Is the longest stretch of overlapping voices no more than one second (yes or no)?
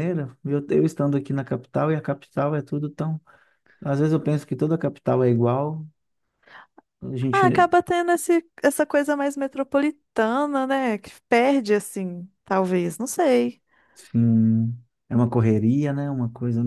yes